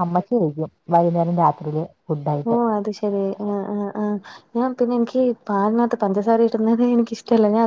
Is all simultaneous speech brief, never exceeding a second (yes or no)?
yes